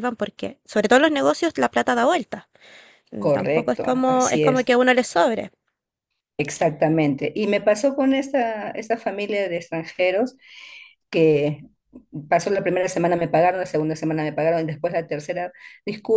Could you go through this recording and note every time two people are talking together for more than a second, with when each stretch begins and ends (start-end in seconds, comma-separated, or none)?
3.2-4.7